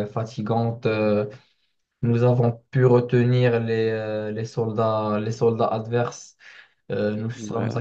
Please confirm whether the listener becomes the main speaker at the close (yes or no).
no